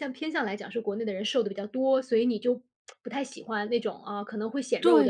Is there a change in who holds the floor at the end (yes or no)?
yes